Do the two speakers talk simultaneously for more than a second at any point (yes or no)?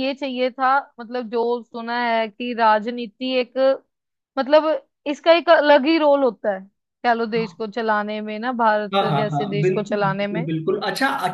yes